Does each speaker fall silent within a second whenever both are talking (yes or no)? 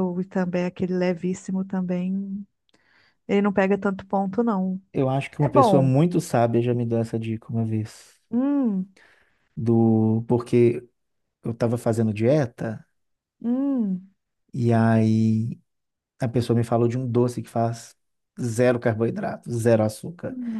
yes